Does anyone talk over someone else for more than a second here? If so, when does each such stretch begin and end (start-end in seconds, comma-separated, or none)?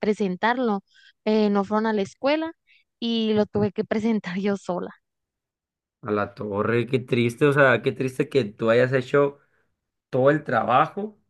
none